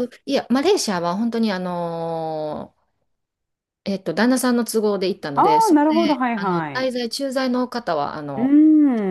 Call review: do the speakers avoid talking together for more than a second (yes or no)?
no